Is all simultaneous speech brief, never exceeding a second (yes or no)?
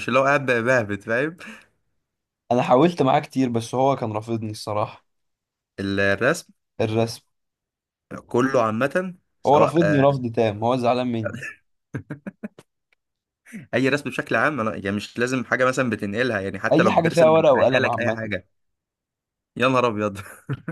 no